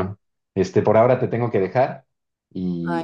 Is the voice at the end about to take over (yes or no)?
no